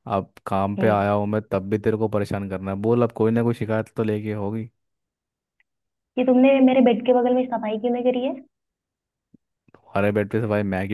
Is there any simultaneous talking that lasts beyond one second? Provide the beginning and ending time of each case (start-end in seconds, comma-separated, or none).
none